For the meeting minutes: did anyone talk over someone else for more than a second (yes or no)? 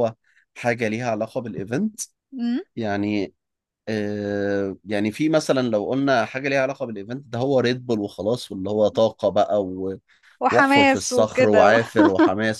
yes